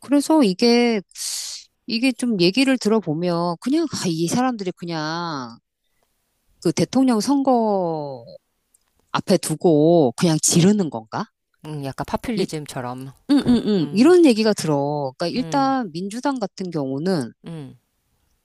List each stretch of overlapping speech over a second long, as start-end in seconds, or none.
none